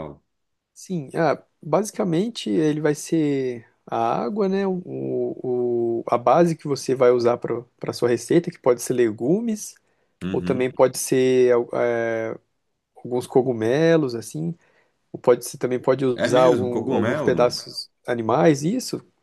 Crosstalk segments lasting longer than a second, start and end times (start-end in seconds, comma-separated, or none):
16.1-17.6